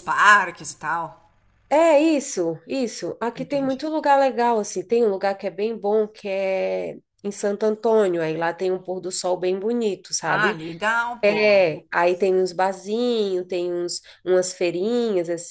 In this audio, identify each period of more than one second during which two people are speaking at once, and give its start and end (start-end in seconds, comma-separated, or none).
none